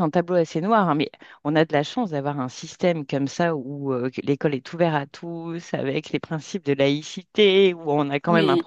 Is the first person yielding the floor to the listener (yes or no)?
no